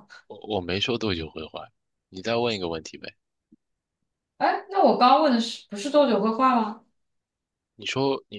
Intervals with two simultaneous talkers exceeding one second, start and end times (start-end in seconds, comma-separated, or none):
none